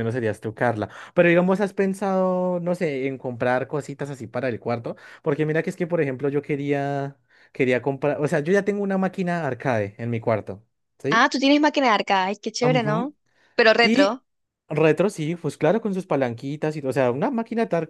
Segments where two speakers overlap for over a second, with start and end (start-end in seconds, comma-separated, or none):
none